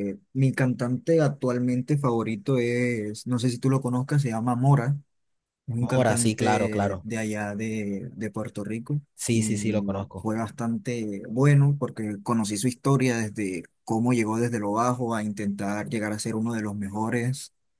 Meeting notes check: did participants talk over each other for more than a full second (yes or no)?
yes